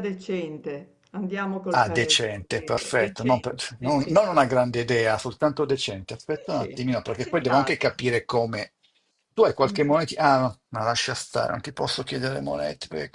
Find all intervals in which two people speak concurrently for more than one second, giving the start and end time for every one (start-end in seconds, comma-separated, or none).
1.7-4.4, 6.3-7.9